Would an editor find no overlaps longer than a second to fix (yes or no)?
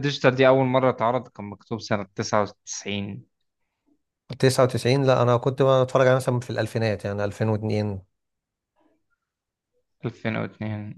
yes